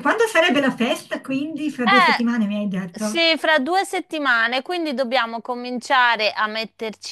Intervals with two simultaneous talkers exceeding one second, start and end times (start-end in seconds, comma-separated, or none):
1.8-3.3